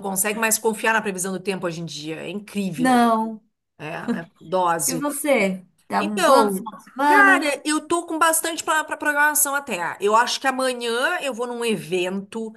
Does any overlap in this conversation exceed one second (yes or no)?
yes